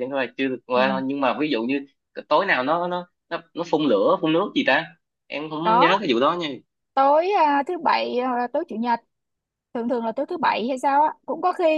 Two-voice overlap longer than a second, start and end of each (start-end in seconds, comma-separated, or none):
none